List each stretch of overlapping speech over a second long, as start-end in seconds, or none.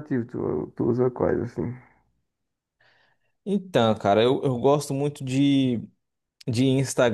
none